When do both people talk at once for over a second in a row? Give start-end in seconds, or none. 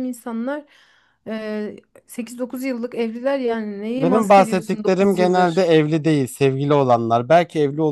4.0-5.7